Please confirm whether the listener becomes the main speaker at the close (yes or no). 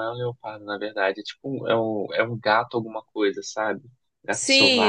yes